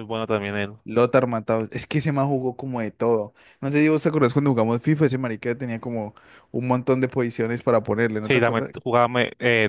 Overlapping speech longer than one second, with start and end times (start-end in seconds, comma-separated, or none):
none